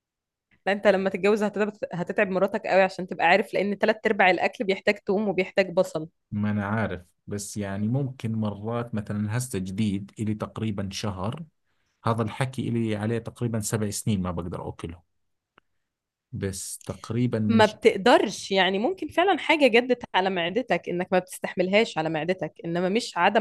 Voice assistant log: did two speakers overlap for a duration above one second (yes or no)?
no